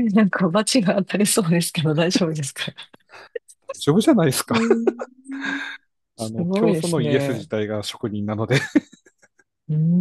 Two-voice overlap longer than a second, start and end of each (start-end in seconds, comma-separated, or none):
6.2-7.5